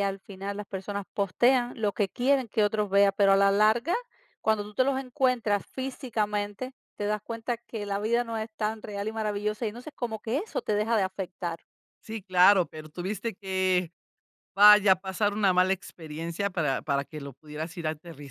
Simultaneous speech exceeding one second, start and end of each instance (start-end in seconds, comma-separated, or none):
none